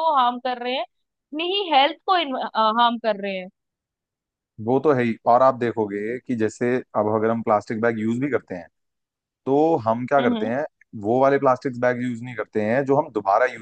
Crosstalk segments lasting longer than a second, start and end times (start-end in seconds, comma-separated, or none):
none